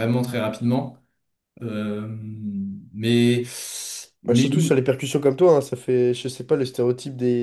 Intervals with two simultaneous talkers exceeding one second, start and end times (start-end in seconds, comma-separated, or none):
none